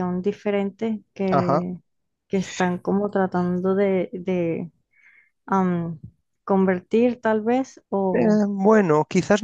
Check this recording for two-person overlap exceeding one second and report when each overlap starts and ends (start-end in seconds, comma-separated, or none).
none